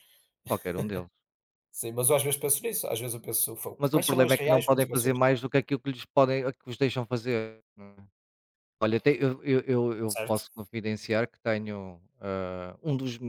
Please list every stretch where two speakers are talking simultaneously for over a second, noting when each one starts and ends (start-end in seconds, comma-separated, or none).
3.8-5.2